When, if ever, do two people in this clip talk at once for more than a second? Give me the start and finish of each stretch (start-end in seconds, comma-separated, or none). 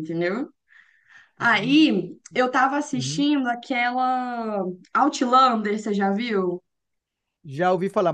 none